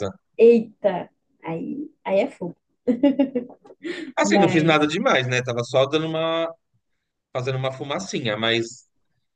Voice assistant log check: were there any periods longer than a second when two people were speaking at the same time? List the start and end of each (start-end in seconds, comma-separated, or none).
none